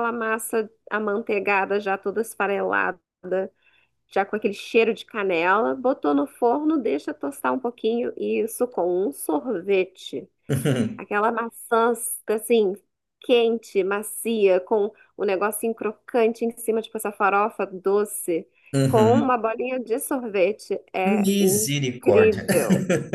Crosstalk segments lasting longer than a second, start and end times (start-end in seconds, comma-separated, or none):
21.0-22.4